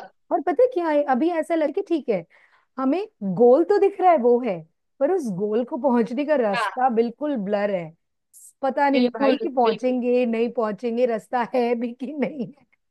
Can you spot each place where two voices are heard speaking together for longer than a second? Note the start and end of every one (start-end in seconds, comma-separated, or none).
8.9-10.3